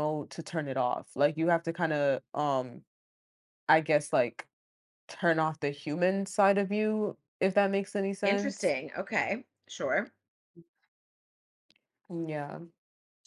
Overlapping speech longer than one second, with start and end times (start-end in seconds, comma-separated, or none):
none